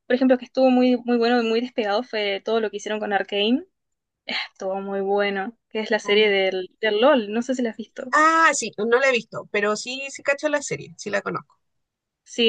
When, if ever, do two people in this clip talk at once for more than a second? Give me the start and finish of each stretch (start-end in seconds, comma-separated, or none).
none